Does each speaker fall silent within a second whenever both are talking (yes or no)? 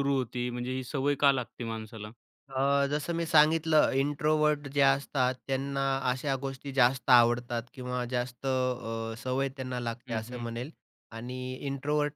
yes